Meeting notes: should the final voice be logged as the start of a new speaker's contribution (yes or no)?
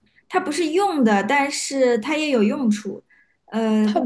no